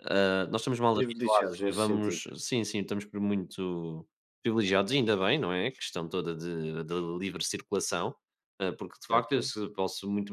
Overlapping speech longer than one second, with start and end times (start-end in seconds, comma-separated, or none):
0.9-2.2